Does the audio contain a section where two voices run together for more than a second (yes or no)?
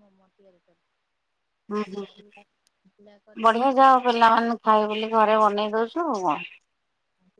no